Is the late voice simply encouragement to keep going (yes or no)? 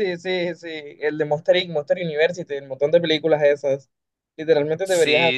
yes